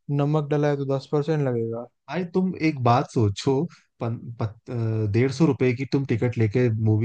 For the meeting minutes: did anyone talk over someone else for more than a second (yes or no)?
no